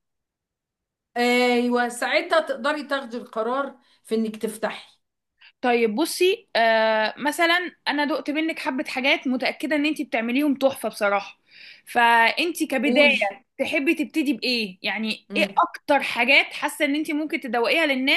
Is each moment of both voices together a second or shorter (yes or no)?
yes